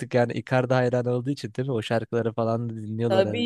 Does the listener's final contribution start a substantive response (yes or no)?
yes